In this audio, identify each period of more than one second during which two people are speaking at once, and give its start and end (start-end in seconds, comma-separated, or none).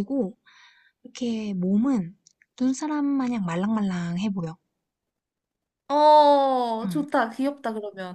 none